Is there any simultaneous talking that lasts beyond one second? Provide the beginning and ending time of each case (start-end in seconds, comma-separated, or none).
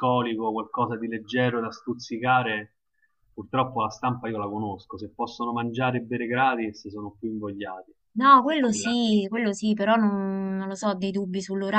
none